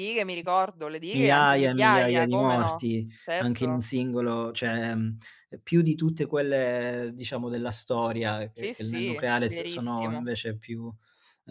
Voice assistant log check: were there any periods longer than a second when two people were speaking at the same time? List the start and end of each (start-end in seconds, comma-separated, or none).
1.1-3.9, 8.5-10.3